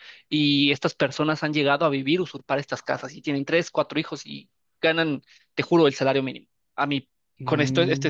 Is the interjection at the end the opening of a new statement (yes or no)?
no